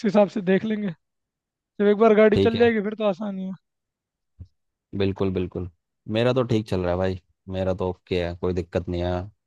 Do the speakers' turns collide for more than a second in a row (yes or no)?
no